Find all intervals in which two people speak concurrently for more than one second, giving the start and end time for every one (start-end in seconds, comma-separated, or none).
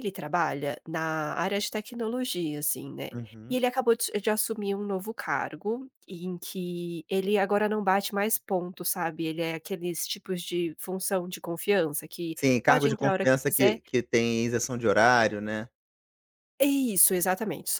12.4-13.8